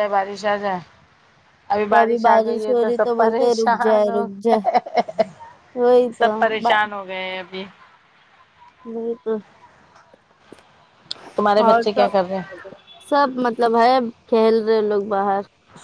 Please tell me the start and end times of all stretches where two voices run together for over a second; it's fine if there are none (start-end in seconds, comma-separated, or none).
2.7-4.6